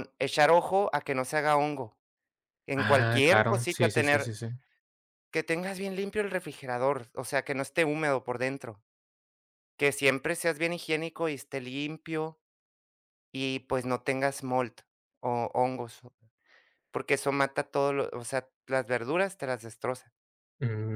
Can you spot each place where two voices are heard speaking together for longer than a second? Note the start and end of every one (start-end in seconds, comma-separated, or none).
2.7-4.3